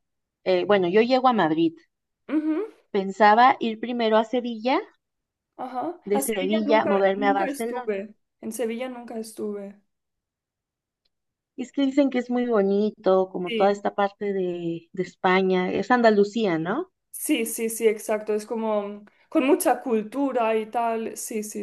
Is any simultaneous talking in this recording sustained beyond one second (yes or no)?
yes